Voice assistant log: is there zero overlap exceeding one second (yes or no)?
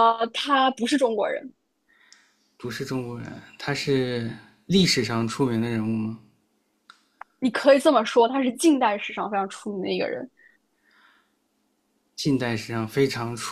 yes